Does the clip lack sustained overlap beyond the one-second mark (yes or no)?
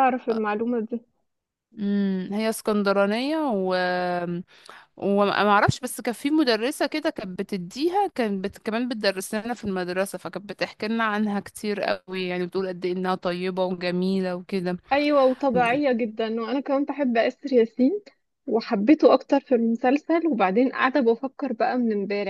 yes